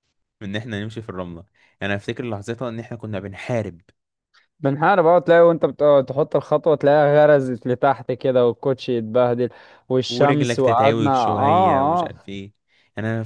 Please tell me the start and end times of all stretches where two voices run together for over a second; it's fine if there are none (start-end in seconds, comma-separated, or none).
10.1-12.1